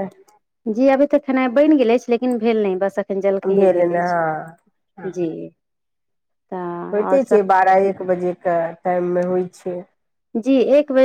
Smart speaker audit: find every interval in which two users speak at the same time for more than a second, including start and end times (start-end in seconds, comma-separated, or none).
3.6-5.3